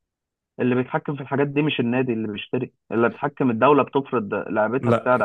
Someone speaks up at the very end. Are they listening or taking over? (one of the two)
taking over